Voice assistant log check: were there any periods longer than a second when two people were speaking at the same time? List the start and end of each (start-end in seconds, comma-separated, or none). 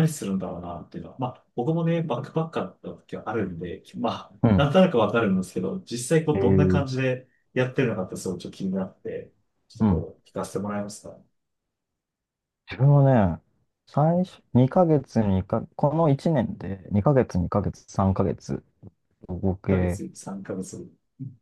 none